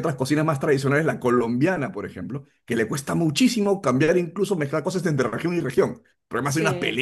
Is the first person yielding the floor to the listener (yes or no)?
yes